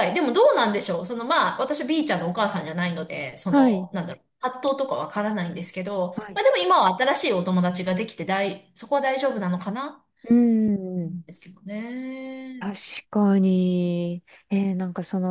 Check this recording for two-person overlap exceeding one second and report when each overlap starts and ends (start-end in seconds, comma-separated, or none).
none